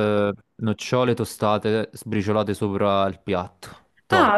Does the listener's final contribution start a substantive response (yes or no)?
yes